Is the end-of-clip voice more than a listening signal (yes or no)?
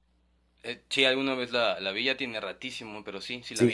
yes